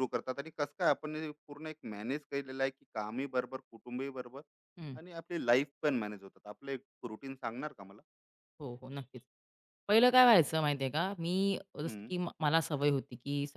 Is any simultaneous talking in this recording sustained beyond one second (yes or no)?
no